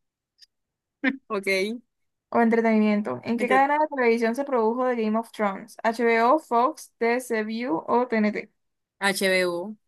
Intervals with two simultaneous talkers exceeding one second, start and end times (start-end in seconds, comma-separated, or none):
none